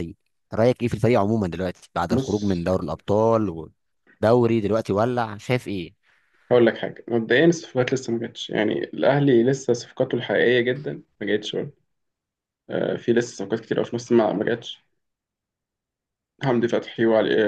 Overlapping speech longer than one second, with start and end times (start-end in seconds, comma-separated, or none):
none